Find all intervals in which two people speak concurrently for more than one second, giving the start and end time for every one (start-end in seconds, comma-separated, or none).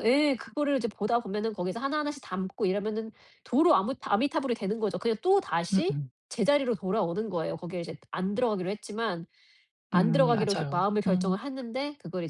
9.9-11.4